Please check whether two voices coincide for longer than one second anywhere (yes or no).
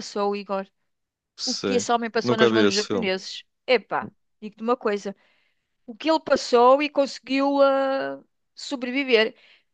yes